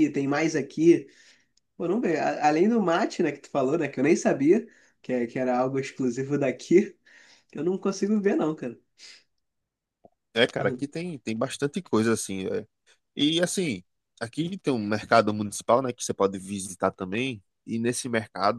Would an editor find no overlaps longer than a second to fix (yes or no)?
yes